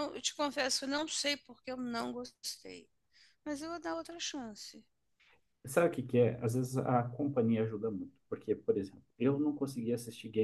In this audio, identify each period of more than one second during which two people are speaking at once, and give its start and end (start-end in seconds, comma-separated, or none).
none